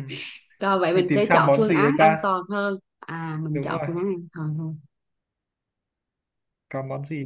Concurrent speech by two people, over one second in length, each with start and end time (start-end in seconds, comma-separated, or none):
0.9-2.3